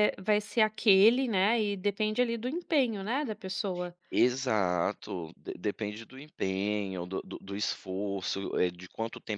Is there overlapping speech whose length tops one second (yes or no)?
no